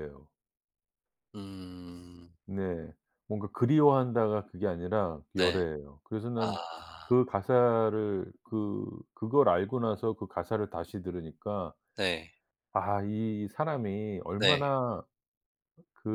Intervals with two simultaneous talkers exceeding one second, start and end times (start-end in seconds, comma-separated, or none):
none